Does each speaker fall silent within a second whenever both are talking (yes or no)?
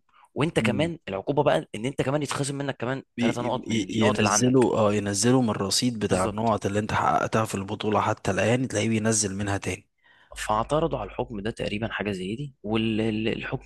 no